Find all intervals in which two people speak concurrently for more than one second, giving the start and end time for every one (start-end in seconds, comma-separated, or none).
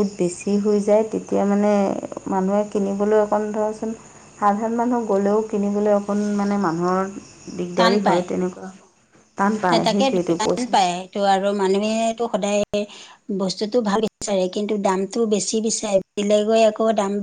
none